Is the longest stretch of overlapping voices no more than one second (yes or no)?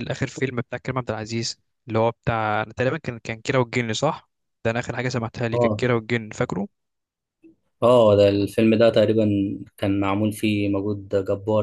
yes